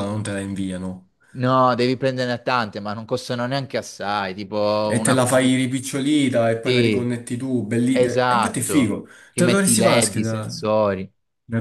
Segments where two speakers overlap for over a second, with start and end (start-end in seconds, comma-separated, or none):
8.0-10.6